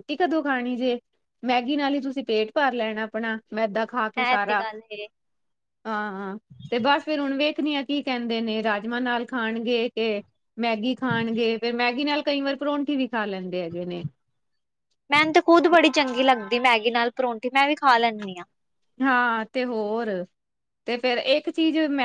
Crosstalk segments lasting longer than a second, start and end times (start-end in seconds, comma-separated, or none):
none